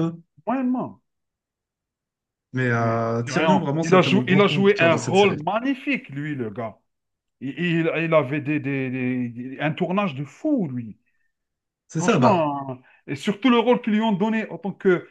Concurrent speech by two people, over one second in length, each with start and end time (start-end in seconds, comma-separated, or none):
2.8-5.5